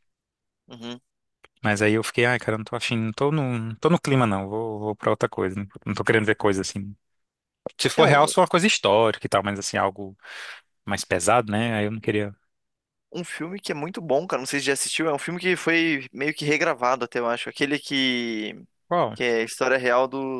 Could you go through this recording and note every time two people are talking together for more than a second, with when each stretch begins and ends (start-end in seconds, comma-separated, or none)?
none